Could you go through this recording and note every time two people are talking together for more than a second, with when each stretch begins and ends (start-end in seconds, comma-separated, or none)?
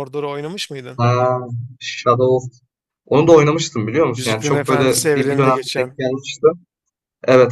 4.2-5.9